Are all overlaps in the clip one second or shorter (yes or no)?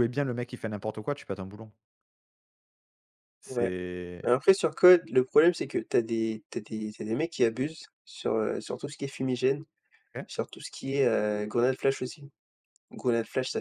yes